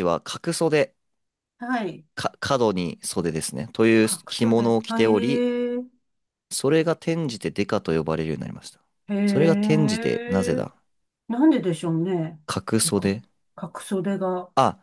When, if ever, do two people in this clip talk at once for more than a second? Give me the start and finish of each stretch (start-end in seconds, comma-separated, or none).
4.0-5.5, 9.2-10.6